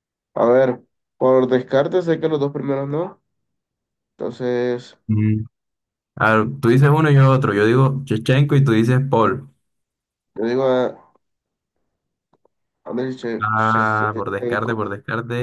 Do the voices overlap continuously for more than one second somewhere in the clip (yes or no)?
yes